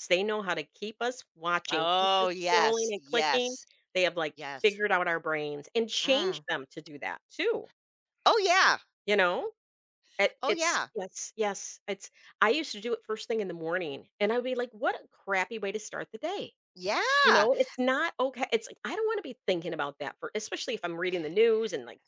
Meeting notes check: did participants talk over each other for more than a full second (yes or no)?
yes